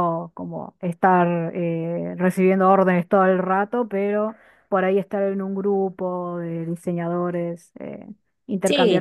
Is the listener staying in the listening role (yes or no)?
no